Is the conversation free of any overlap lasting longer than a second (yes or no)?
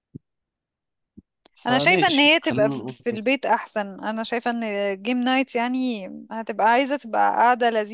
no